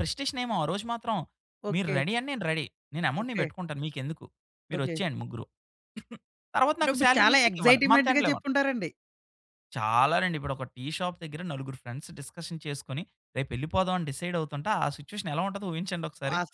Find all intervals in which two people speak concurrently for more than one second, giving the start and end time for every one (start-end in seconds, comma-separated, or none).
6.8-8.5